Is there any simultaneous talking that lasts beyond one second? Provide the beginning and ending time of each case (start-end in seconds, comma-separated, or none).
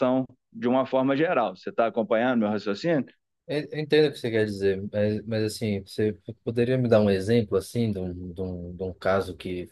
none